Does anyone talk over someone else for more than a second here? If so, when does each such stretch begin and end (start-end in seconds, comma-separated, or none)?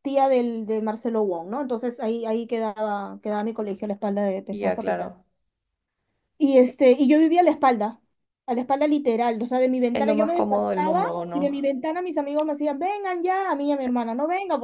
9.9-11.7